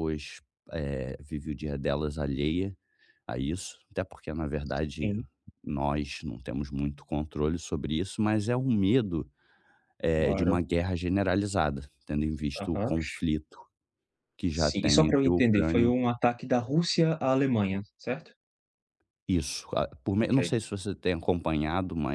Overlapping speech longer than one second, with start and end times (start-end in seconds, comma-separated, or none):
14.5-15.9